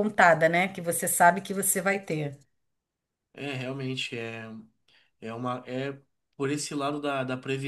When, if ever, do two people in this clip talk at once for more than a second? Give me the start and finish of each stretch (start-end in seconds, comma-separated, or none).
none